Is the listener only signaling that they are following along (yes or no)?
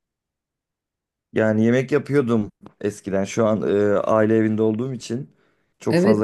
no